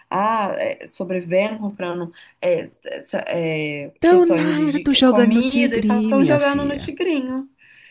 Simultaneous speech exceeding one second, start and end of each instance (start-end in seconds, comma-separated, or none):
4.0-6.9